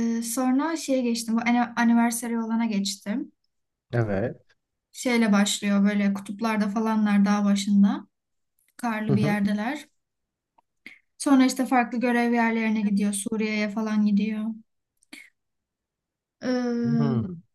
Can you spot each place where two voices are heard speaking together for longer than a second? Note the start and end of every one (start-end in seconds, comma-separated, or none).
none